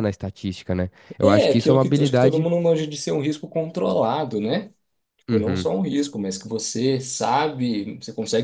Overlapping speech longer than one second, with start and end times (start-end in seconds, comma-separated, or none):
1.2-2.5